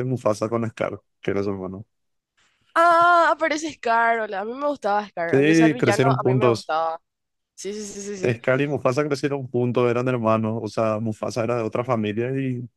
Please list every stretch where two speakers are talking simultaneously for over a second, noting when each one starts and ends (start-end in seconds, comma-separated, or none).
5.3-6.7